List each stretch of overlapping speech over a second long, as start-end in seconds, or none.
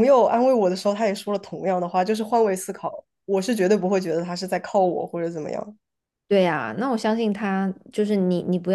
none